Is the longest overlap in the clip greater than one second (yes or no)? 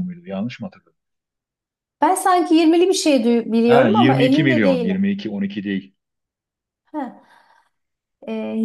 yes